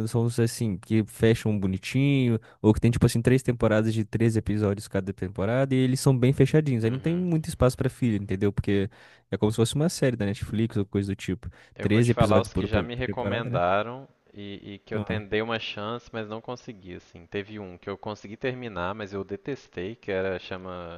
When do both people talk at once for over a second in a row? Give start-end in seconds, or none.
11.7-13.5